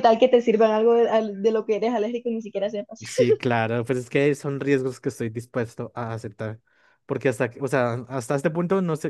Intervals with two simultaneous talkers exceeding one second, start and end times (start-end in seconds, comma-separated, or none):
none